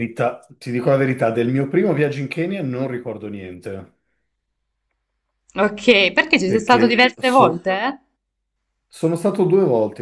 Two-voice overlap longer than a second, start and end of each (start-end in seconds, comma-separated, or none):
6.4-7.7